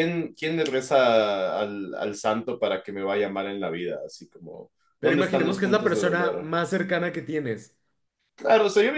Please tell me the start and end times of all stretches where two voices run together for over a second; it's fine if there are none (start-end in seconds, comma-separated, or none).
5.0-6.5